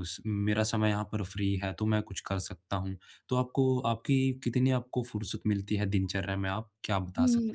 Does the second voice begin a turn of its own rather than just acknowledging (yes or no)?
yes